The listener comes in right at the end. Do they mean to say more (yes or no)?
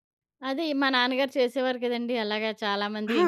no